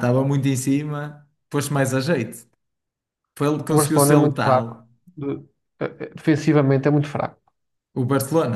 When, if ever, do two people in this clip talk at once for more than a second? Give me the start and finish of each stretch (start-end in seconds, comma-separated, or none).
3.7-4.9